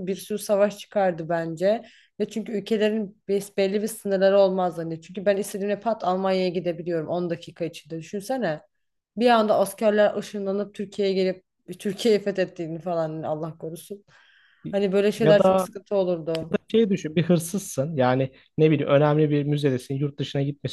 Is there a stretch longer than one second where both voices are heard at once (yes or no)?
no